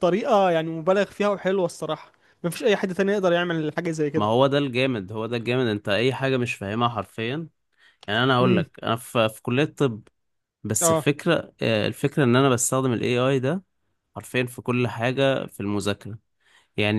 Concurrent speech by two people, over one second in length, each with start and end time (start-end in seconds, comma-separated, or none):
none